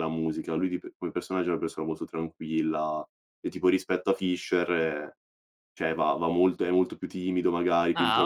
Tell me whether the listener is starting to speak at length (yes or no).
yes